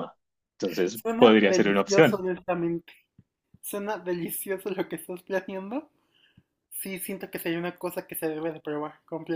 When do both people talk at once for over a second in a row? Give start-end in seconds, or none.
0.9-2.2